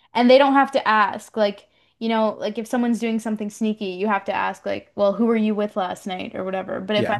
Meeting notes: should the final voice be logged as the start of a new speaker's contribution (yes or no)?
no